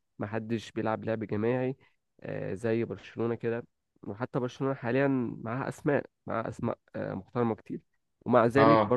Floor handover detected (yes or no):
no